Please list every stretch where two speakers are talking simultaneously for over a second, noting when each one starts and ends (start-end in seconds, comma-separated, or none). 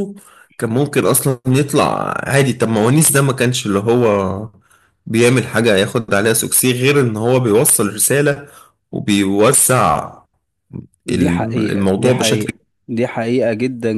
11.1-12.6